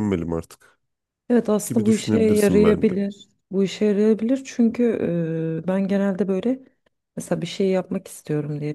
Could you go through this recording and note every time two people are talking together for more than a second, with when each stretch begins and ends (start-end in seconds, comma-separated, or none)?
1.6-2.9